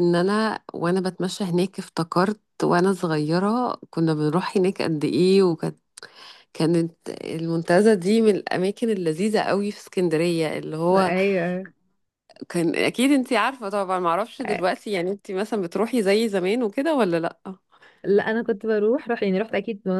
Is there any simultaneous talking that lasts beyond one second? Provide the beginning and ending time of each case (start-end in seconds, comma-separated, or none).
none